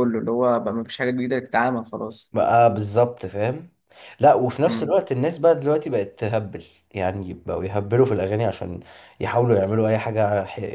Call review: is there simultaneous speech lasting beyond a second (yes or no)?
no